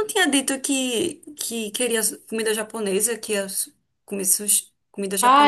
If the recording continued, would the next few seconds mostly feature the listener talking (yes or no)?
yes